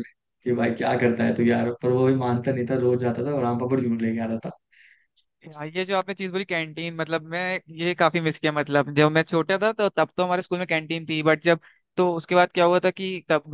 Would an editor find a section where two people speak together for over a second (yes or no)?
no